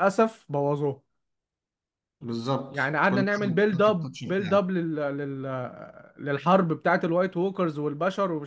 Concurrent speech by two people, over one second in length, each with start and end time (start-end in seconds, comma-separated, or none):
2.7-4.6